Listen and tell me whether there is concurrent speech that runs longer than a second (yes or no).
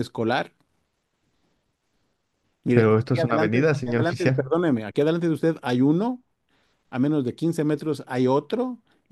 yes